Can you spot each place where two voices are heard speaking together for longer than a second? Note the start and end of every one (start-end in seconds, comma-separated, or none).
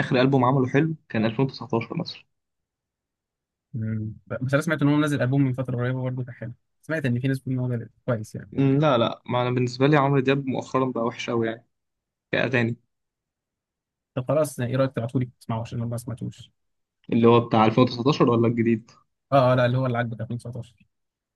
none